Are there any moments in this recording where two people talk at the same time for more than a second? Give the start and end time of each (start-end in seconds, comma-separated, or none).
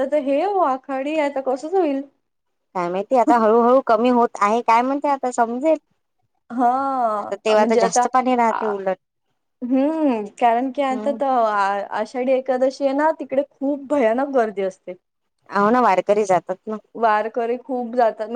none